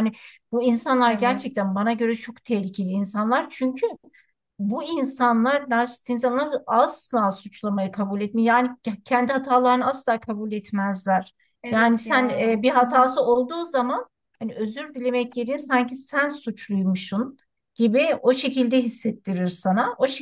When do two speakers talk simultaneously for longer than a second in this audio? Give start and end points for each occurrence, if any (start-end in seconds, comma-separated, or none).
11.7-13.1